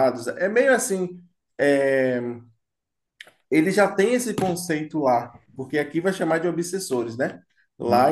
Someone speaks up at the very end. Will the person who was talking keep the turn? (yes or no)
yes